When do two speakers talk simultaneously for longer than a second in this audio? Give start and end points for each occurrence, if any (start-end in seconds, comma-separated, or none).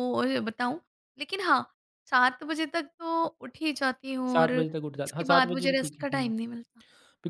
4.3-6.3